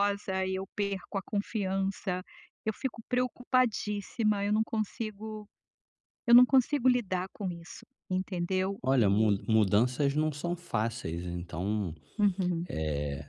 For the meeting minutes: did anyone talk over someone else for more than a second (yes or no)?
no